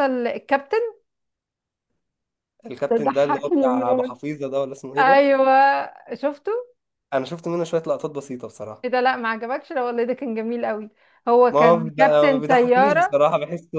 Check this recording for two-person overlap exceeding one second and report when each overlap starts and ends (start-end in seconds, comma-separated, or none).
2.9-4.2, 11.5-13.2